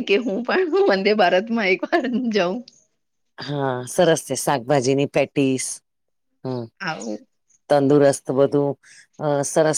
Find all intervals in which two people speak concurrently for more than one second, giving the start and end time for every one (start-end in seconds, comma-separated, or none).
none